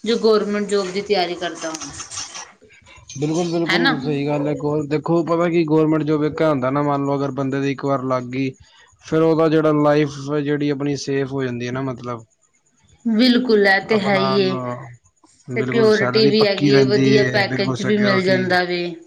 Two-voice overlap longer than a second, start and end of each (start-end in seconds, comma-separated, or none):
15.6-18.4